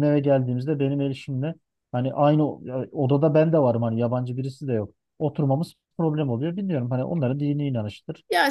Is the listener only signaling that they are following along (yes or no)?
no